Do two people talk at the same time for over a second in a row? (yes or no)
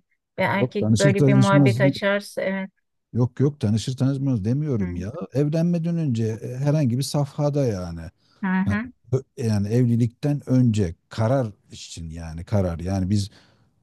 yes